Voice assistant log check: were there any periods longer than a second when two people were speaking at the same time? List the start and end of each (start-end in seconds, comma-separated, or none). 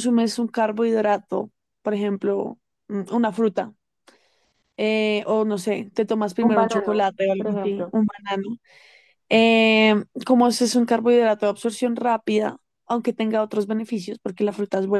6.4-7.9